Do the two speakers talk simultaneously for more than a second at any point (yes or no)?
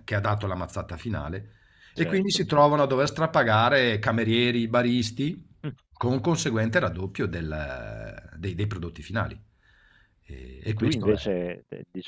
no